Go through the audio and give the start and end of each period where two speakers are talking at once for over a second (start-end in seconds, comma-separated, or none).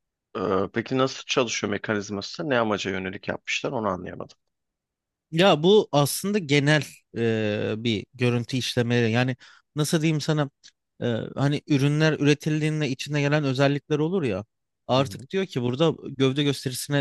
none